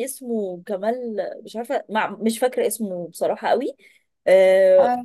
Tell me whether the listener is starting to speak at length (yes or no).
no